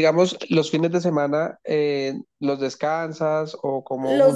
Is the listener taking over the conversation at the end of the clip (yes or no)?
yes